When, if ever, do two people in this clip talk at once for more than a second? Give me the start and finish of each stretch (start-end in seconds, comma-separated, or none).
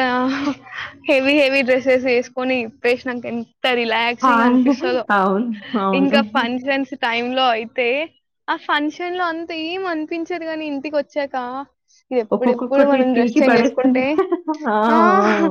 12.3-14.0